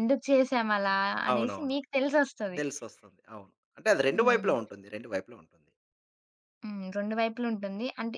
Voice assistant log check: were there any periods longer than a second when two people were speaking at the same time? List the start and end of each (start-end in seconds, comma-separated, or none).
none